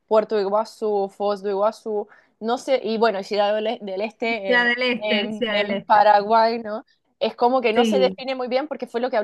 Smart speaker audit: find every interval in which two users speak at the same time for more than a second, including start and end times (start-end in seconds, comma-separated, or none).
4.5-6.0